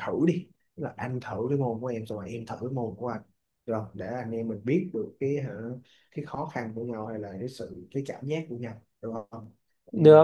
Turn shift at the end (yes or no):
yes